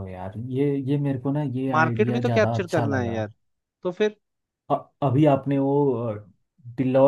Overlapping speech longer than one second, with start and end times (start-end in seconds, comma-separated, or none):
1.7-3.2